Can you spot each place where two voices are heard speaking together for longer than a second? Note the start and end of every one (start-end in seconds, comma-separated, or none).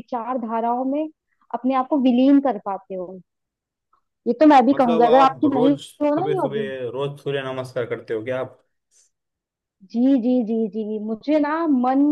4.7-6.7